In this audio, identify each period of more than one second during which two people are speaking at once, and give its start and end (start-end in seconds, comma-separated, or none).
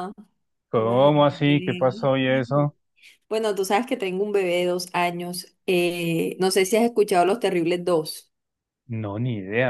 0.7-2.1